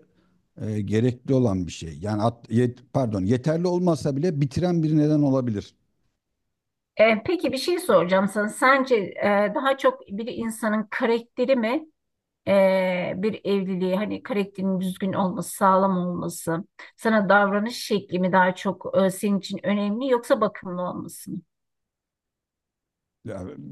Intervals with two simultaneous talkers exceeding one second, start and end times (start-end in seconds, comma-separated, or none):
none